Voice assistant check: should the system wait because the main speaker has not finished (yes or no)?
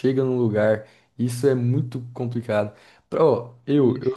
yes